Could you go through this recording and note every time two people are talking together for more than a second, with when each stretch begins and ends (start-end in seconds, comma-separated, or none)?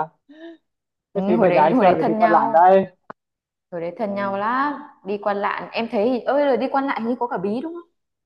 1.1-2.6